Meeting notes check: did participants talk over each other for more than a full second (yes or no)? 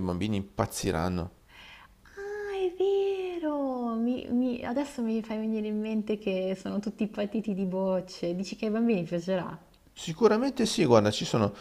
no